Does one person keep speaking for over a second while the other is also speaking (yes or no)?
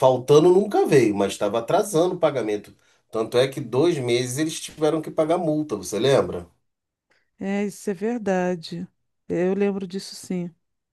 no